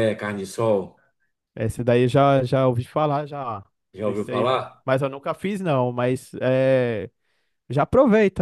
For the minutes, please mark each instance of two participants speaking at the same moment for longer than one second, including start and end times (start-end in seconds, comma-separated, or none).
none